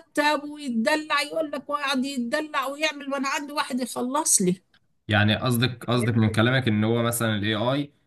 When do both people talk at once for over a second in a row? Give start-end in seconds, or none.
none